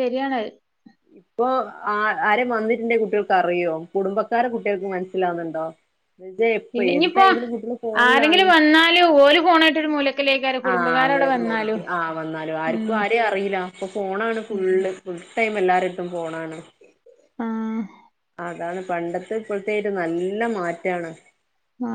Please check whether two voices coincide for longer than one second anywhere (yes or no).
no